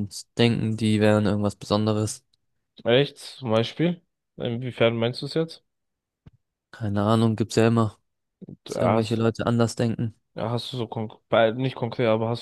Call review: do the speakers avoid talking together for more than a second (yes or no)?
yes